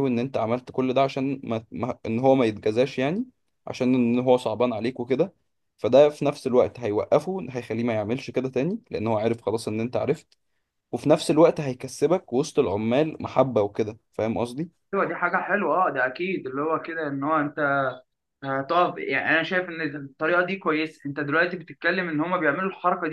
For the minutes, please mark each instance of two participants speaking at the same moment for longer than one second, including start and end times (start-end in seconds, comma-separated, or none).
none